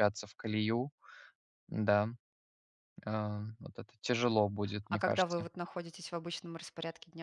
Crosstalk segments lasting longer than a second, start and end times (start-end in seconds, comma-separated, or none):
none